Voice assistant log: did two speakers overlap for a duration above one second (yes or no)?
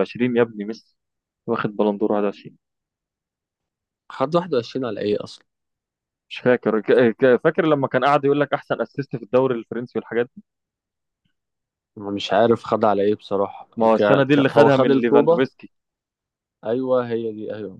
yes